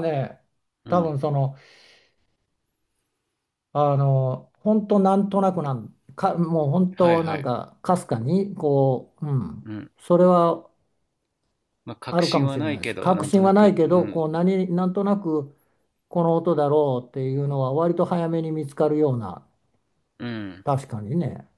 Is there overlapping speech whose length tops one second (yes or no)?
yes